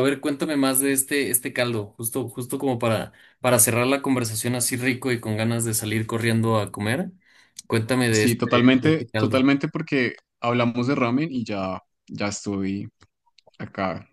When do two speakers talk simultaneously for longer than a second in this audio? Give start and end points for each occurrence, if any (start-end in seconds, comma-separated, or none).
8.1-9.4